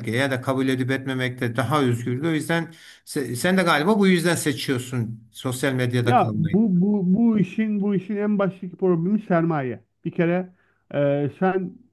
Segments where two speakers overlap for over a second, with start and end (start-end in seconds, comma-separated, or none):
none